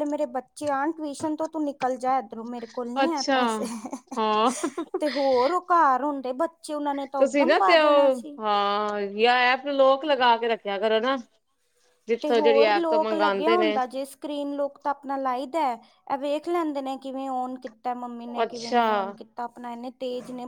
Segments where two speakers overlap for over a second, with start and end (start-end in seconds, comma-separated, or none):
12.2-13.8